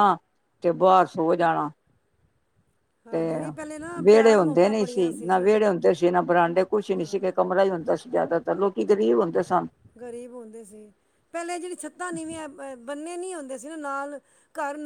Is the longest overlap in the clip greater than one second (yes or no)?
yes